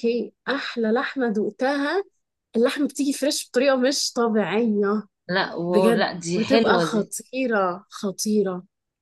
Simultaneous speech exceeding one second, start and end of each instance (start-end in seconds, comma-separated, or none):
5.7-7.1